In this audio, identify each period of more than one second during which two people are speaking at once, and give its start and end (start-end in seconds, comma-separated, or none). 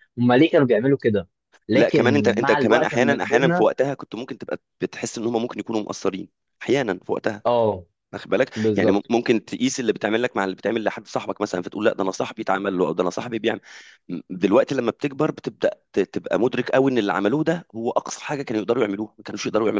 1.7-3.7